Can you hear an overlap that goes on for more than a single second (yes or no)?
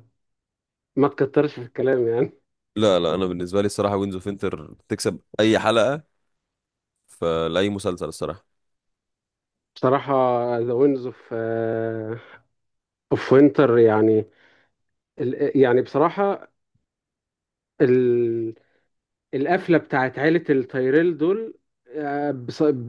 no